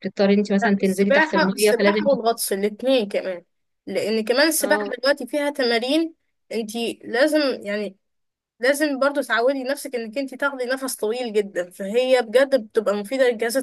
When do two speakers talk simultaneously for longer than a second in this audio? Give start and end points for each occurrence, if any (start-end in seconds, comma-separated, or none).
0.6-2.1